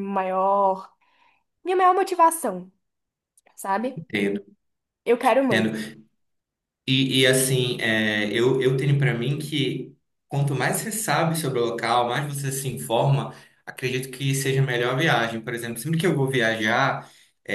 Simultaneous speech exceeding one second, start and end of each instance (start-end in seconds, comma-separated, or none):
none